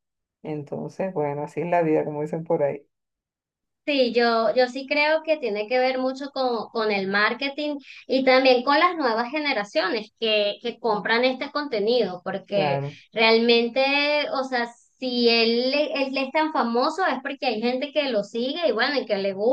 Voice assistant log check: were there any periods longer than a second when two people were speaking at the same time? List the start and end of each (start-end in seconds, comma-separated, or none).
none